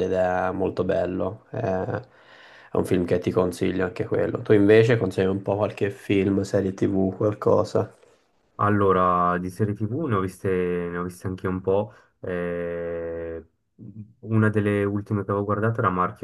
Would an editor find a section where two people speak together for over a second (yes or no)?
no